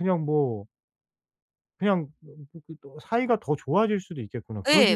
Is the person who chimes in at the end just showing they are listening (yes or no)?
no